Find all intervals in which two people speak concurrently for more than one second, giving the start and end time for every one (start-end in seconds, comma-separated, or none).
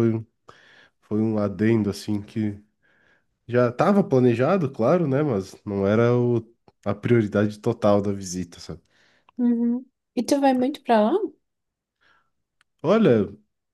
none